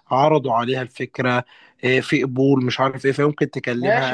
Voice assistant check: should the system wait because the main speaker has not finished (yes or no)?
no